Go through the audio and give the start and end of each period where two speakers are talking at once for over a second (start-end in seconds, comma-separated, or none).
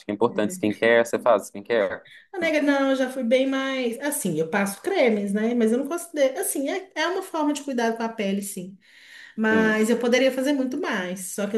none